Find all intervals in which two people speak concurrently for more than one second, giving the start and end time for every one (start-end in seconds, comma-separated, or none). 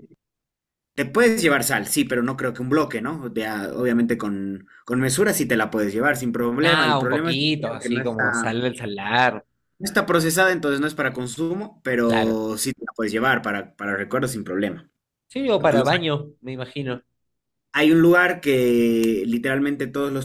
6.6-8.6